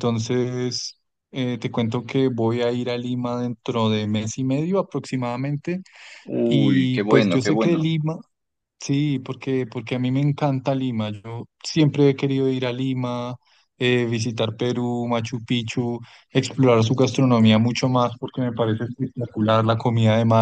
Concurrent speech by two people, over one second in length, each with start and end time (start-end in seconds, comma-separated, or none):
6.4-7.8